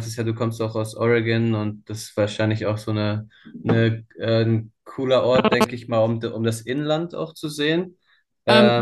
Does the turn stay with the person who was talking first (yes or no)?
no